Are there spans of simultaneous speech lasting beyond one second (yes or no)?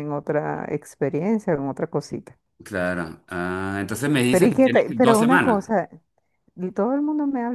yes